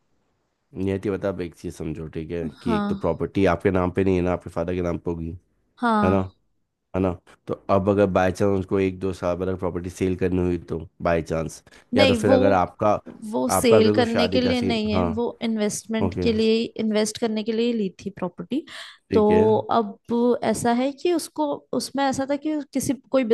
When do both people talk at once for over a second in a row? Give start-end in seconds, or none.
13.6-15.1